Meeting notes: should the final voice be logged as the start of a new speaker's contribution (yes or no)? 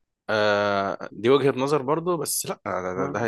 no